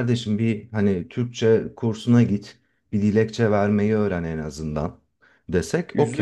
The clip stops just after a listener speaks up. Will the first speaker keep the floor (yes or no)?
yes